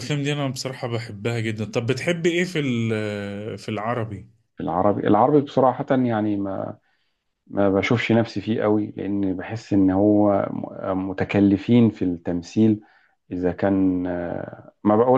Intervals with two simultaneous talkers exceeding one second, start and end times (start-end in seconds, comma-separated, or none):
none